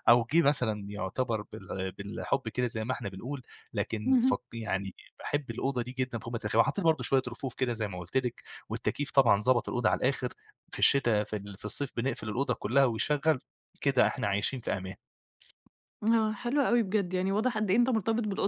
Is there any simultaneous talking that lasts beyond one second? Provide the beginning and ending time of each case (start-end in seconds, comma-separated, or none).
none